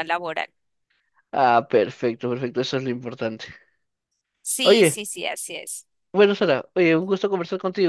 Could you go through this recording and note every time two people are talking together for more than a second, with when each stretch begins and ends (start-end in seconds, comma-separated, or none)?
none